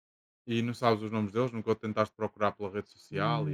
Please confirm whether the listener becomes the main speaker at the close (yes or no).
yes